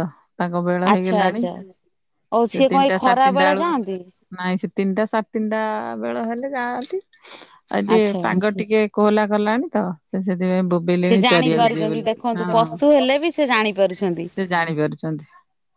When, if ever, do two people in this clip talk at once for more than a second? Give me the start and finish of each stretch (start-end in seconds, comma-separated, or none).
11.1-13.1